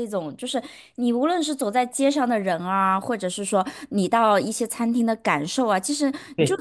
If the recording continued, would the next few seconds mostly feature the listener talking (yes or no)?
no